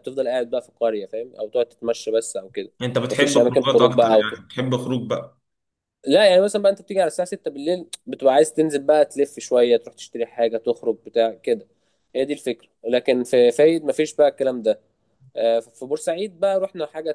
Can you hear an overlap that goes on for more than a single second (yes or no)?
yes